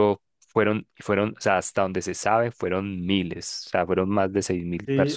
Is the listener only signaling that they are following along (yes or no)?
no